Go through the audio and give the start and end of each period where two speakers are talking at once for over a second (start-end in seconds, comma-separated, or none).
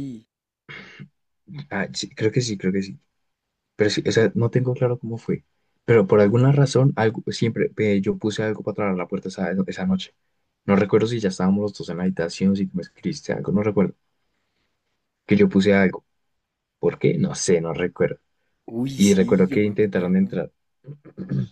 18.9-20.2